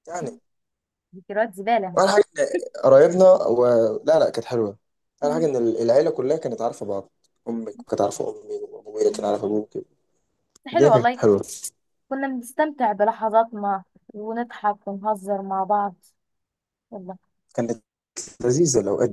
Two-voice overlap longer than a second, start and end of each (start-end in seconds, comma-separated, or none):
none